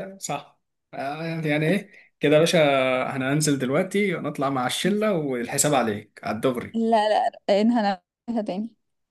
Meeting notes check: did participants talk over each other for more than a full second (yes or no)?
no